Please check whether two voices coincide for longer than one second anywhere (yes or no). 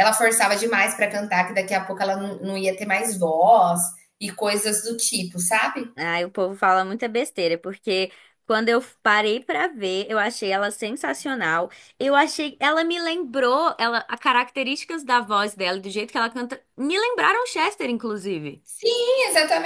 no